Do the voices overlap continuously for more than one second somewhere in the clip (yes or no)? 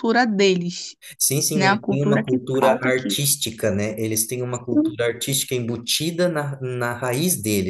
yes